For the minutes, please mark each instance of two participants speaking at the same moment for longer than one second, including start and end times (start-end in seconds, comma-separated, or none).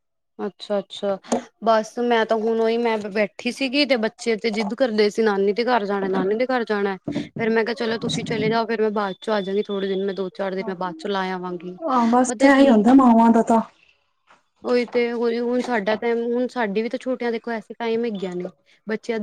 none